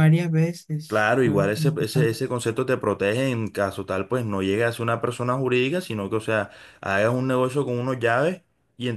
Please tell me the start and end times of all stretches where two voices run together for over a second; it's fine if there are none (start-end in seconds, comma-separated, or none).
0.9-2.1